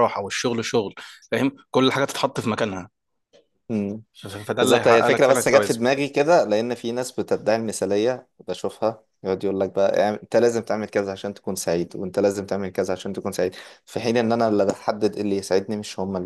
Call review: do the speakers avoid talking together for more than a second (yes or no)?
no